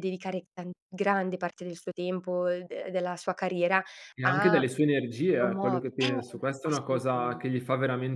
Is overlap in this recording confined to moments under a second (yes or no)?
no